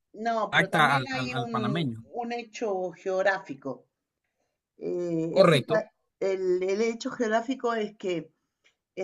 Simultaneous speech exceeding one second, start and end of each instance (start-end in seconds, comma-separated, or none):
0.5-2.0